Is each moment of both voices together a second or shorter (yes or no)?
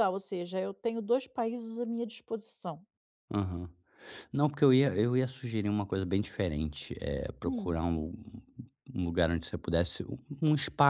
yes